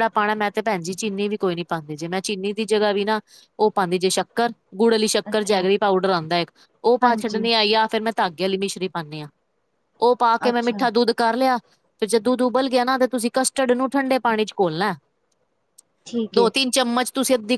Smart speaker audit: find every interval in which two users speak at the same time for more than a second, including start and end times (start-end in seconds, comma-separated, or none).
none